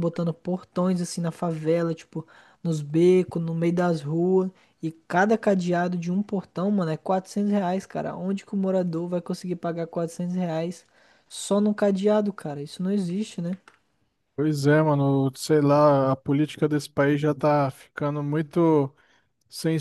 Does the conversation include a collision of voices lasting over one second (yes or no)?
no